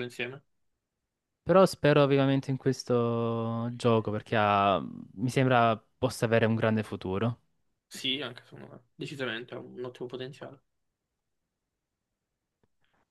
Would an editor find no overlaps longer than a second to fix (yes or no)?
yes